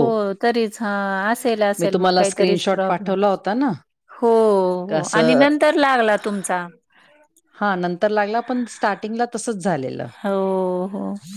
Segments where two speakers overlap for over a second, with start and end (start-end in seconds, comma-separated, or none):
1.8-3.1